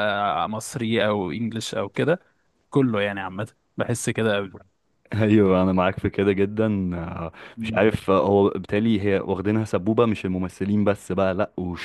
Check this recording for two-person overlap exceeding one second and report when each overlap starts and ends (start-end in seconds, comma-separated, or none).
none